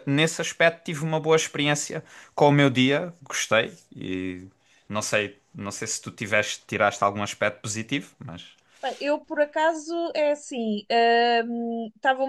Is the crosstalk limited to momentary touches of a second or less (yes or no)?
yes